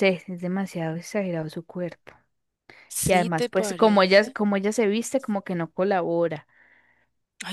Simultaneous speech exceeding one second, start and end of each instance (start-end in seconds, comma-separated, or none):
3.0-4.4